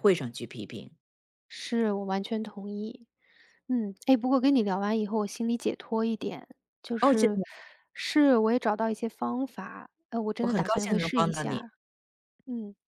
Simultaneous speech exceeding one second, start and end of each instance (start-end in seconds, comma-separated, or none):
10.4-11.7